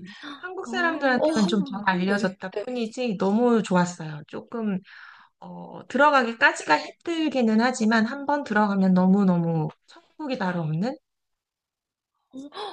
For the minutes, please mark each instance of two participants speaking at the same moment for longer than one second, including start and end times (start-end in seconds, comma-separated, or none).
0.6-2.4